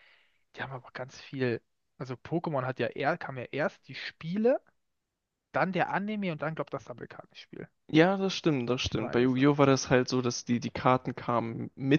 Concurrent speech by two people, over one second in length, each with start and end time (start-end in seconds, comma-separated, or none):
none